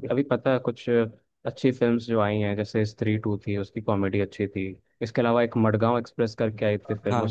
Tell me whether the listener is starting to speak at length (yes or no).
no